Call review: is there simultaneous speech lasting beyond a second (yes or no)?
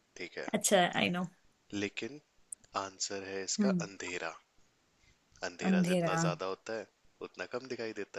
no